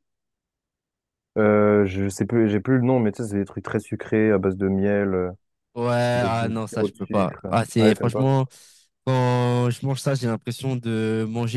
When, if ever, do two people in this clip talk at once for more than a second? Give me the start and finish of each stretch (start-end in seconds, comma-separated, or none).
6.2-8.3